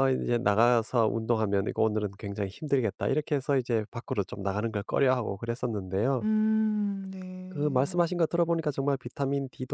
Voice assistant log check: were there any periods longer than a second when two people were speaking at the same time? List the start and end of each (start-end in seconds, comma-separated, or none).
none